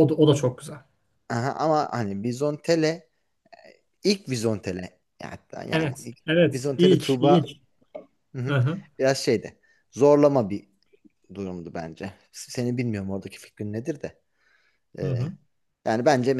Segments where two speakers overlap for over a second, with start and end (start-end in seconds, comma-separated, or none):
5.7-7.5